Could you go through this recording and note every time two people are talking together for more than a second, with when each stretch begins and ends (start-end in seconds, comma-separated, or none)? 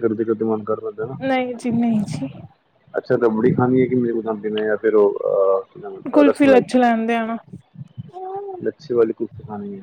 none